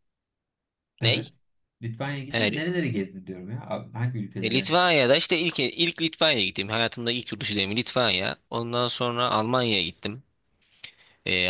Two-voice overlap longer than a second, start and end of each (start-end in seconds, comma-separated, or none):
none